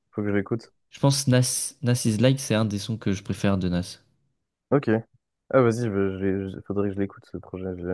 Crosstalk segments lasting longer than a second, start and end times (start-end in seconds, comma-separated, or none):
none